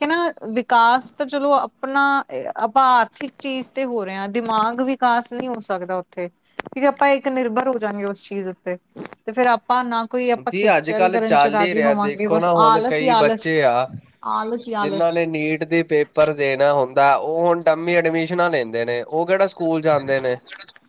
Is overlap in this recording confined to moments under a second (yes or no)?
no